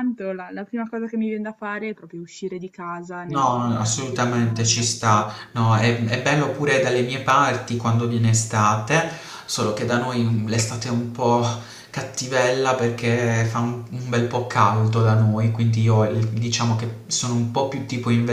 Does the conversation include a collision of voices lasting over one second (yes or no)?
yes